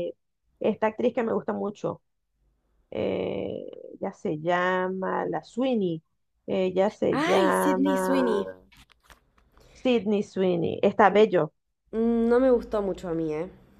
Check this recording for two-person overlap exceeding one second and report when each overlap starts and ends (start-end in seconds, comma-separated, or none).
7.1-8.5